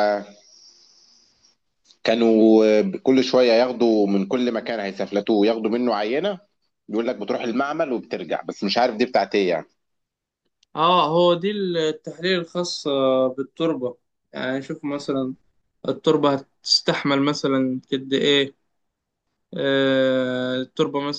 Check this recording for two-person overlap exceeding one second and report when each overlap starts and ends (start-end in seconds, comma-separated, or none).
none